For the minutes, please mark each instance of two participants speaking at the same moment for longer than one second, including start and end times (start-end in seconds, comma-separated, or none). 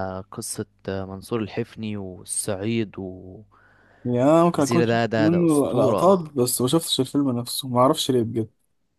4.8-6.1